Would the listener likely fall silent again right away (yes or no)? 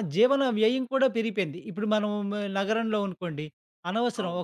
yes